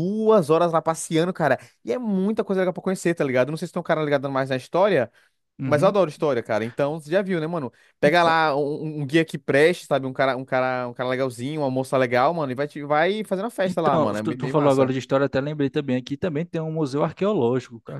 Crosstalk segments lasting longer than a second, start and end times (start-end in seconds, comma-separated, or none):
13.7-14.9